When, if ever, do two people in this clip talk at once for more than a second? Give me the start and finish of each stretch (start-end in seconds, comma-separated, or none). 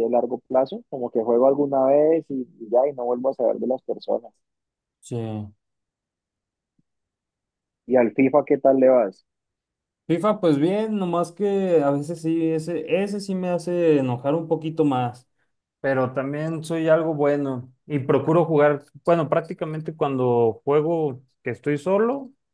none